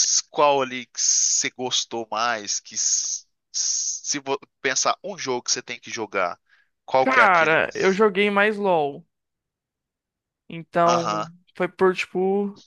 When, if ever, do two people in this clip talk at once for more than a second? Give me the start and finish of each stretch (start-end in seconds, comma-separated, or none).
none